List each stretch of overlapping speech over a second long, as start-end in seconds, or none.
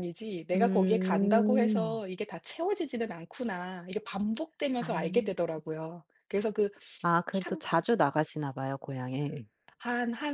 0.5-2.0